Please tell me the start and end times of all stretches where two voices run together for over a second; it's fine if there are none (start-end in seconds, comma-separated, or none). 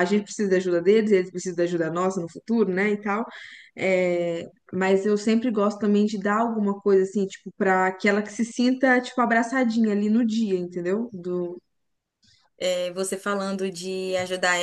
none